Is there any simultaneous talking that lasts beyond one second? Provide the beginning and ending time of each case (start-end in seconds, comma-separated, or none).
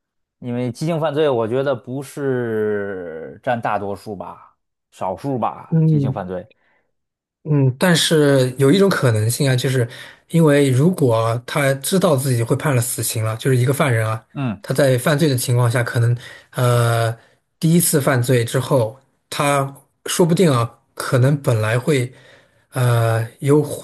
none